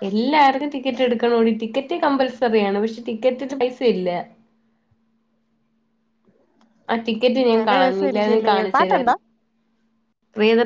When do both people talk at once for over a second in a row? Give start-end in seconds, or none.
7.5-9.1